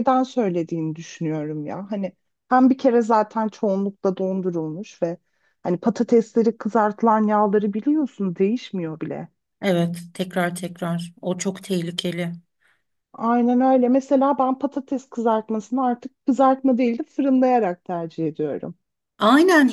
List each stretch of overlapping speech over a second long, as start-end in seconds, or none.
none